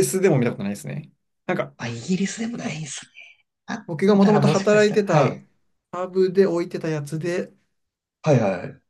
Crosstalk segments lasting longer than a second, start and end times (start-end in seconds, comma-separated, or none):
3.9-5.4